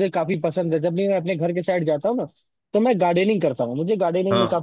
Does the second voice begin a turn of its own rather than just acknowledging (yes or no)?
no